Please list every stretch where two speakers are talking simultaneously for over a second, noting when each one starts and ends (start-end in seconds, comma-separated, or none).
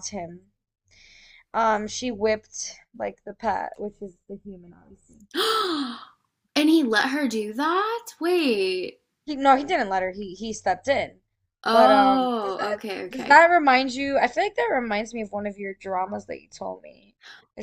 11.7-13.4